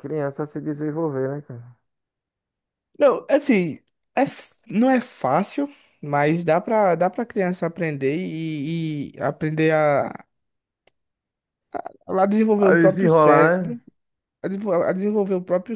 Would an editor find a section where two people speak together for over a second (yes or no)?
yes